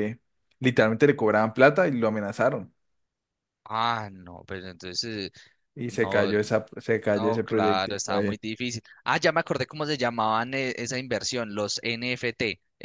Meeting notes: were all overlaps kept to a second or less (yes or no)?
no